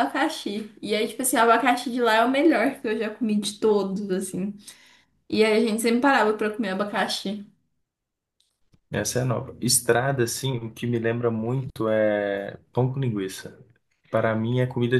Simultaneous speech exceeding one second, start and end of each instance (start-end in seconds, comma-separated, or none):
none